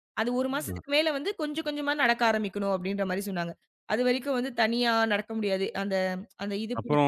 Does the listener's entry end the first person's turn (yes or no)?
yes